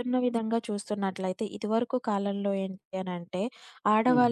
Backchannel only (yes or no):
yes